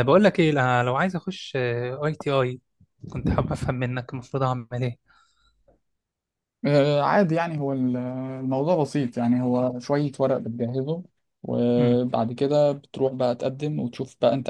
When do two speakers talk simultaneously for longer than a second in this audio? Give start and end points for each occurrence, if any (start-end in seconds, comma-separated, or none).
none